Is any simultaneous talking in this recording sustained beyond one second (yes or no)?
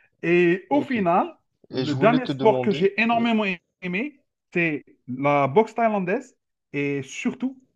yes